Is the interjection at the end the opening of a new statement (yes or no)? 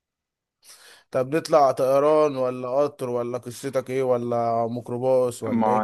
yes